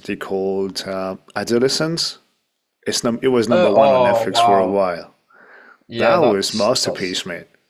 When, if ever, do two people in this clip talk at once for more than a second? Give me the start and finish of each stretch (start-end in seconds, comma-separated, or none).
3.5-4.8, 6.0-7.2